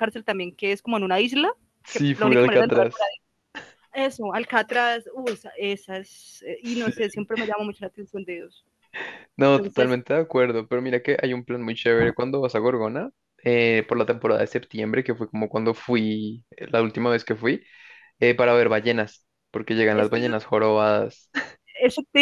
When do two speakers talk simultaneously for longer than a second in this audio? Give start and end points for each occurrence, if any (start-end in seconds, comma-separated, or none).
1.9-3.1